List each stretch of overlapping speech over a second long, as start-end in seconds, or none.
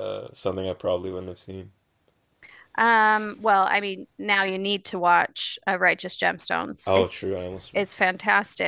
none